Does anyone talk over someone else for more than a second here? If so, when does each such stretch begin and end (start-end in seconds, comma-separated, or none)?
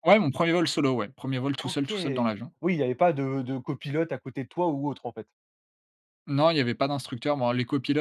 none